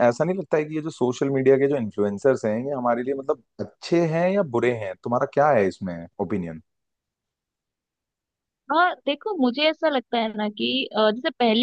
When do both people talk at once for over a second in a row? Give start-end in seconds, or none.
none